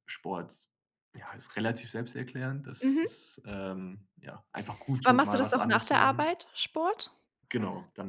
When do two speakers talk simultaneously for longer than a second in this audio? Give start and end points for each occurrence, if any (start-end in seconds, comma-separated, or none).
5.0-6.3